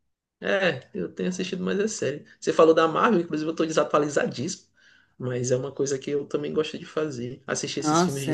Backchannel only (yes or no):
no